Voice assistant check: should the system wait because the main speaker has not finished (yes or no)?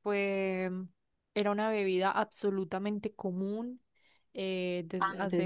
yes